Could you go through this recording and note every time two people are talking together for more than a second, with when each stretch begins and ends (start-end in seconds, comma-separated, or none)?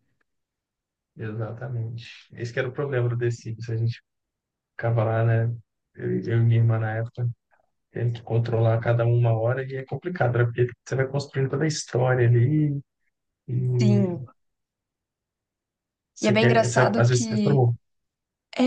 16.2-17.7